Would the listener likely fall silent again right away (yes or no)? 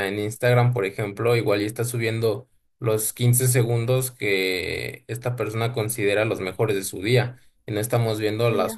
yes